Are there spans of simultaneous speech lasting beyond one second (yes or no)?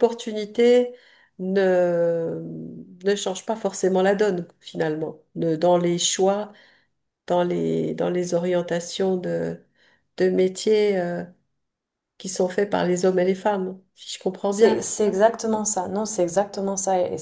no